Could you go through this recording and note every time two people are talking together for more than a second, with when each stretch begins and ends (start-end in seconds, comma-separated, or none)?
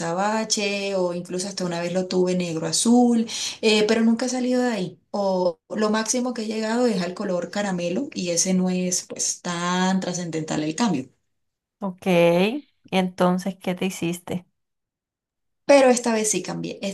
none